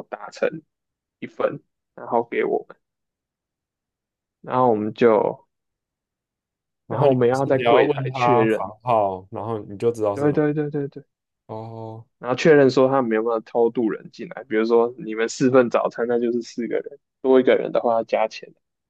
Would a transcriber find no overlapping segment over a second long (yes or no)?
no